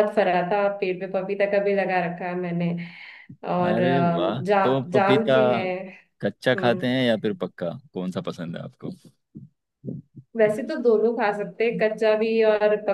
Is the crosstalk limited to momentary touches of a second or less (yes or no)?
no